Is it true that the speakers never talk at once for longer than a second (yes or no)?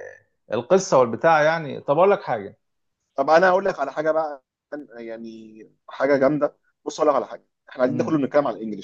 yes